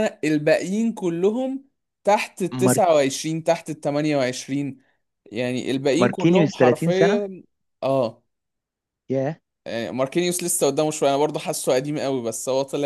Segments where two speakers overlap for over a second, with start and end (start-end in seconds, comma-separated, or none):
6.0-7.3